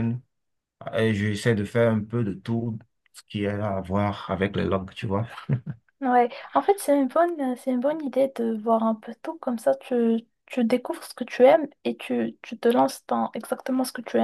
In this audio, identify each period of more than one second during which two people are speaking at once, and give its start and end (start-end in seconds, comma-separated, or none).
none